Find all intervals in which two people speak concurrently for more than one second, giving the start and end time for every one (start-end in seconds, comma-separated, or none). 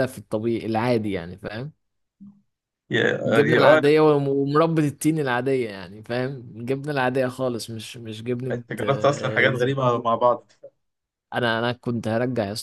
8.5-10.2